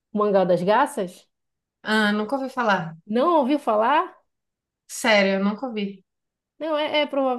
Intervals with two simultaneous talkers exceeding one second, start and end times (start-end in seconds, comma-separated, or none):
none